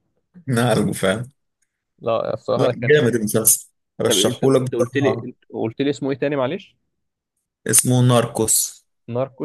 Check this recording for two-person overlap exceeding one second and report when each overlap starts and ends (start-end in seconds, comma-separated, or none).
4.1-5.3